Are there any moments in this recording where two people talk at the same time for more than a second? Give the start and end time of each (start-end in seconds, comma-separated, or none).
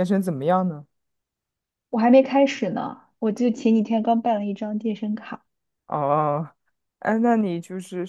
none